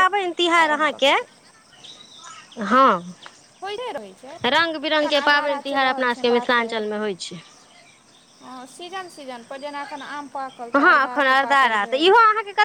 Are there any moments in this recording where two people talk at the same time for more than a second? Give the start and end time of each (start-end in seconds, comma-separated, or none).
4.6-6.8